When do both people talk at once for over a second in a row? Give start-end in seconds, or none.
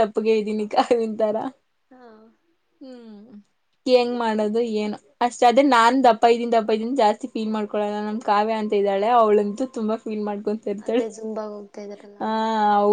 none